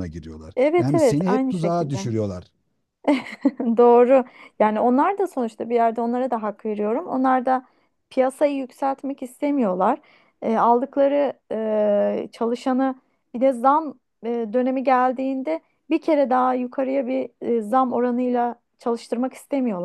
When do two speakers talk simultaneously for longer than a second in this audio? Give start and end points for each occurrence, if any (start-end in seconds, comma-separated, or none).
0.6-2.1